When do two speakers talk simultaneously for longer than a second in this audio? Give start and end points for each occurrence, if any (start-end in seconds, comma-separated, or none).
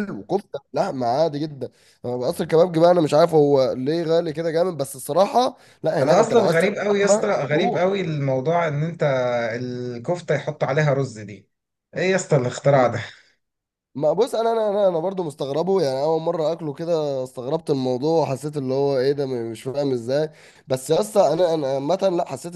6.0-7.8